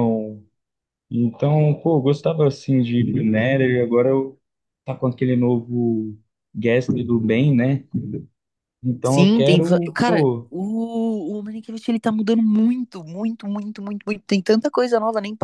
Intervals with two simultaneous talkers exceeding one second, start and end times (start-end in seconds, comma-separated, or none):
9.0-10.5